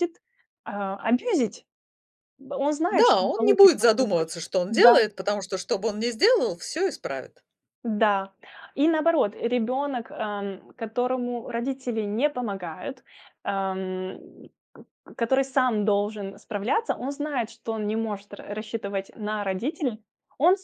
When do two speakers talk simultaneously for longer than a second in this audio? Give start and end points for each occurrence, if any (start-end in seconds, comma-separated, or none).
2.9-4.9